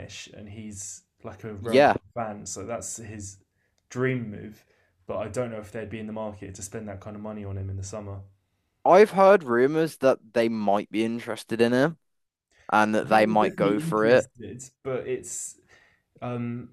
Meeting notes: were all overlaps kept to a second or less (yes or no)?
no